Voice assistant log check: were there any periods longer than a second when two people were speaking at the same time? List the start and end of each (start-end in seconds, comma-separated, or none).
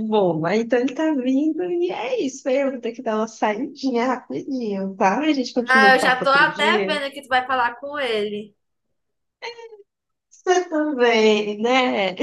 5.7-7.0